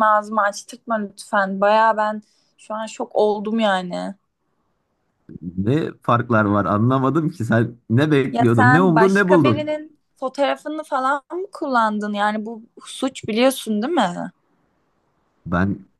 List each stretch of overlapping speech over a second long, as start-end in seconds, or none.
8.3-9.8